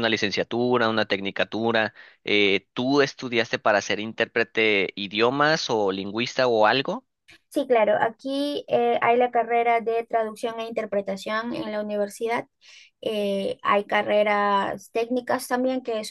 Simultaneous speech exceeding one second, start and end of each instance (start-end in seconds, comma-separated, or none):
none